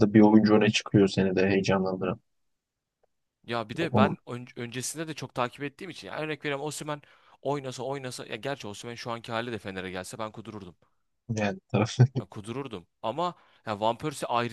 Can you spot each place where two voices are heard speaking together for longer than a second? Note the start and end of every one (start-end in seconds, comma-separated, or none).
none